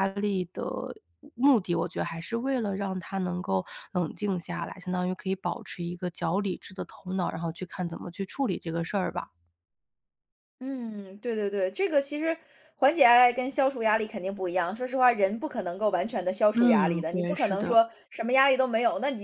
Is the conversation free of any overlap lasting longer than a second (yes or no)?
no